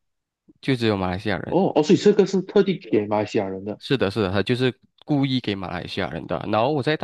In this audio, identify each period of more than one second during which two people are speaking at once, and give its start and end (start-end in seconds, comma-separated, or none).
none